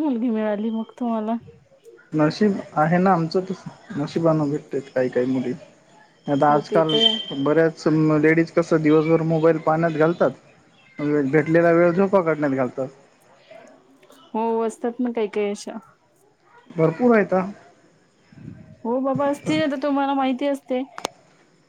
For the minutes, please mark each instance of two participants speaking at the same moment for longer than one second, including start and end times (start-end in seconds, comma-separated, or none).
none